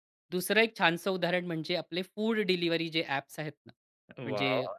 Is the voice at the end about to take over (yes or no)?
no